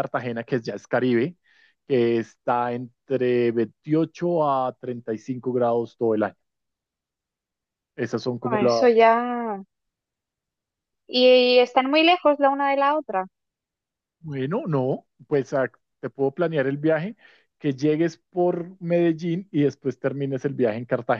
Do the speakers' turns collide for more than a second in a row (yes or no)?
no